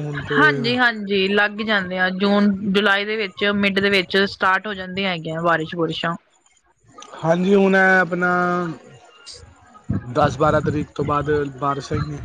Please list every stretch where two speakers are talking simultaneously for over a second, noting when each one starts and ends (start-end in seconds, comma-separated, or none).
none